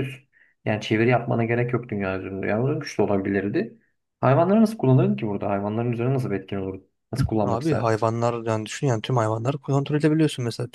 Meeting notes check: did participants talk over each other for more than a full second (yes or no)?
no